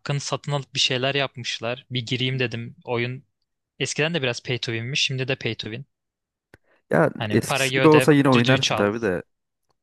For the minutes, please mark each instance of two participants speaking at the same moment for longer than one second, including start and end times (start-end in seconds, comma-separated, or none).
7.2-8.9